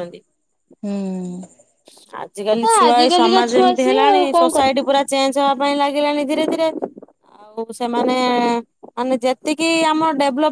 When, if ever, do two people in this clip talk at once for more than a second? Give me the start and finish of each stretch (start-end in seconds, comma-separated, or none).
2.6-4.8